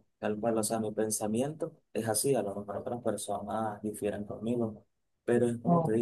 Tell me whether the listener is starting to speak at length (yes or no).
no